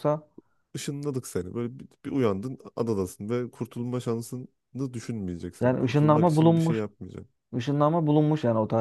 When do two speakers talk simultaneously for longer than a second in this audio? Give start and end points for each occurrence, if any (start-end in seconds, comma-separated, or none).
5.6-6.8